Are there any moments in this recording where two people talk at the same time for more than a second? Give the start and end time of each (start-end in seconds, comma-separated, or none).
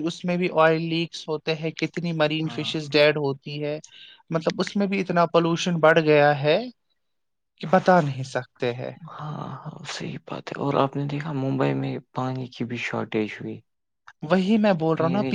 none